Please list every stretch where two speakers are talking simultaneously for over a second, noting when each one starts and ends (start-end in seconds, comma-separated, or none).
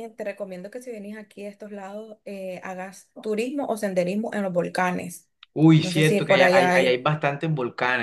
5.8-7.0